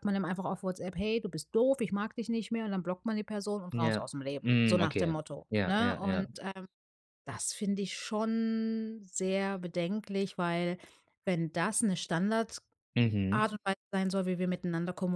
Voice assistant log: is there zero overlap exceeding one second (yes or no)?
no